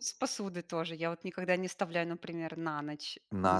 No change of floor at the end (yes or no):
no